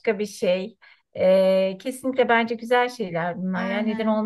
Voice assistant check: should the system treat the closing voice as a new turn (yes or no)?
no